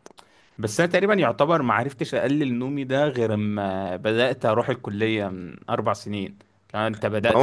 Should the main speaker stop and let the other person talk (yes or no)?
yes